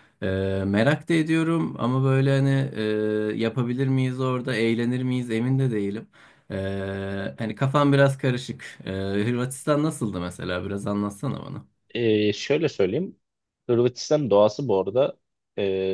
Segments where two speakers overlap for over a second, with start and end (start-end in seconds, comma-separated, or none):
none